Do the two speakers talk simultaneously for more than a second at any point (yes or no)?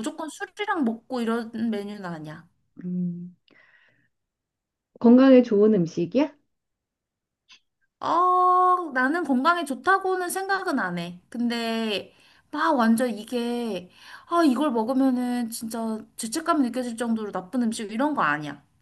no